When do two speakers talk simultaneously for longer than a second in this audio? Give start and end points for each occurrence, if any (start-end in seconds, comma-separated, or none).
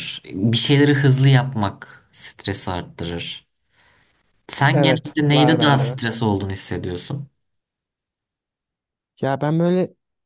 4.7-6.0